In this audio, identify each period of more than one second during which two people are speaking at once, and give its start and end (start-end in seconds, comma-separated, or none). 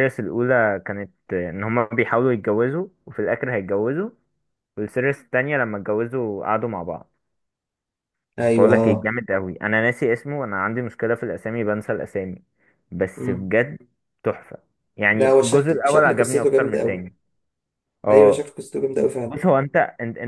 15.1-17.1